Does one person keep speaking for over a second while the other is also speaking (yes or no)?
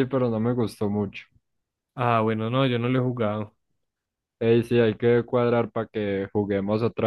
no